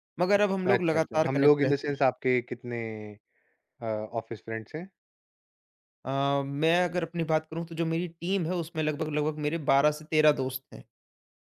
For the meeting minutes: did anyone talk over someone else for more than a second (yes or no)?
yes